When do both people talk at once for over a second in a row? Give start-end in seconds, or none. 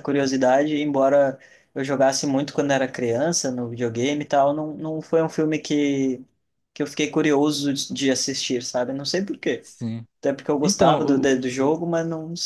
10.6-11.8